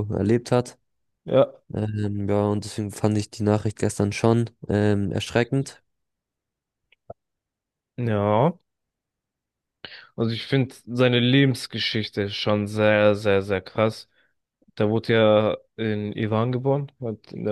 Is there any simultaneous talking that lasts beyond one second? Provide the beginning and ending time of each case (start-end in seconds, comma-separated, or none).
none